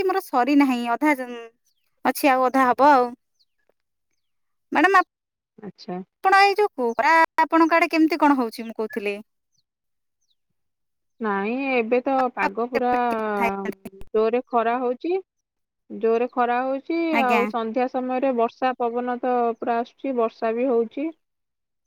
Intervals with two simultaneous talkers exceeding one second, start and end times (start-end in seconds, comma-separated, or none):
none